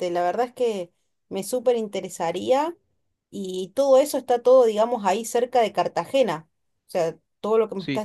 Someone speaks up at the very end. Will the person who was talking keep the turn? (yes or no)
yes